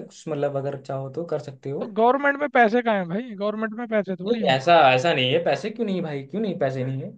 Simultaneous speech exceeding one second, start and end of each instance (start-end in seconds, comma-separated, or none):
none